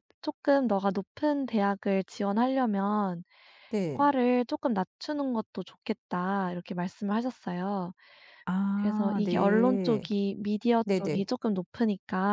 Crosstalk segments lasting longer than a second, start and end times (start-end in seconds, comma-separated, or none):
8.7-10.0